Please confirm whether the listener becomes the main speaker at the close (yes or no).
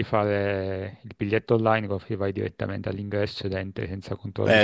yes